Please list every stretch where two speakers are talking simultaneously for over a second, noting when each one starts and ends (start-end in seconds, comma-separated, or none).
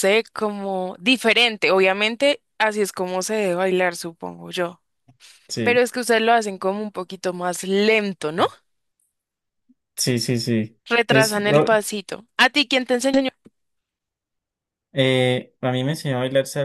none